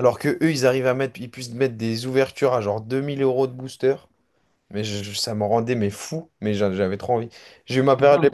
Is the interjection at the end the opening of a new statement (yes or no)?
no